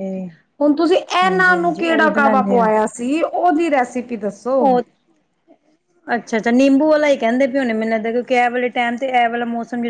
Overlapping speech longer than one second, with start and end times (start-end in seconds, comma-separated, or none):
1.2-2.7